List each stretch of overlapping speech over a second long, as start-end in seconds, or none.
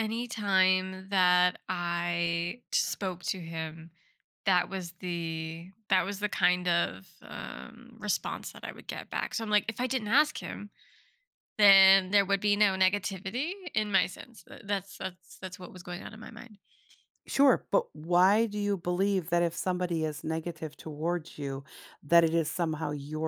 none